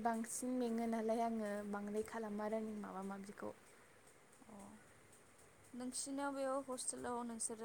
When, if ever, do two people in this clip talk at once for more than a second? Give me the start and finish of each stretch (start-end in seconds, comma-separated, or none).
none